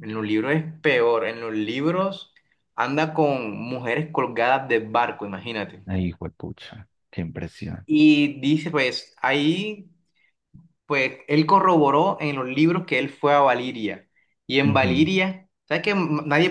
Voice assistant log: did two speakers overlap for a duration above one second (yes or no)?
no